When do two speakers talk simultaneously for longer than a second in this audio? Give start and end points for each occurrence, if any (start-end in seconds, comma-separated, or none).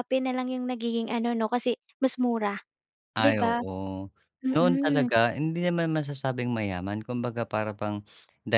none